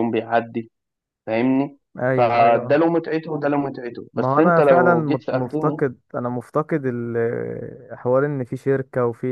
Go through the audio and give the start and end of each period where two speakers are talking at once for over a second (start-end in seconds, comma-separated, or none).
4.2-5.8